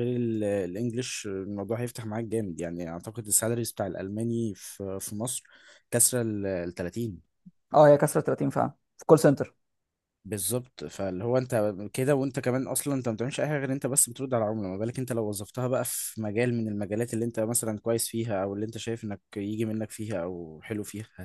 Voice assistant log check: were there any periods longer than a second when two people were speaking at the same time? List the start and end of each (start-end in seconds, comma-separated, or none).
none